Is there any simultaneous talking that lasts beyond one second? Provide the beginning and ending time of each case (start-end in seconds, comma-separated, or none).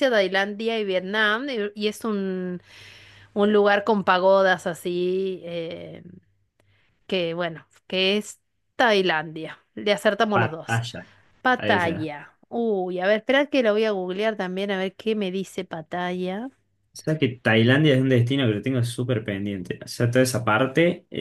none